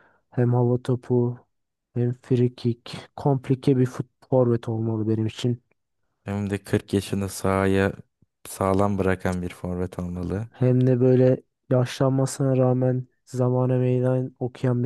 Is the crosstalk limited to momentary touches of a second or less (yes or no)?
yes